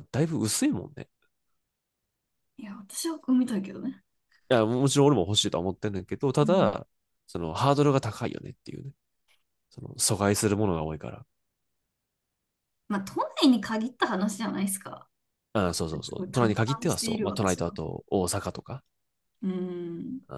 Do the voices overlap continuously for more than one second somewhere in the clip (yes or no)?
yes